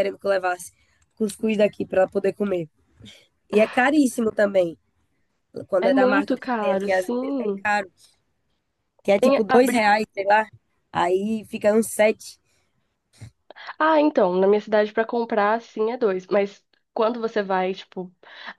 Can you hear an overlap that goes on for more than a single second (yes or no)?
yes